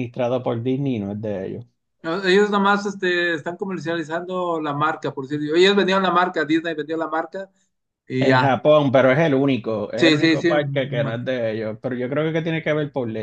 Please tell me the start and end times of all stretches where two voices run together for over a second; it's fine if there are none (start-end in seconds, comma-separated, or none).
10.0-11.3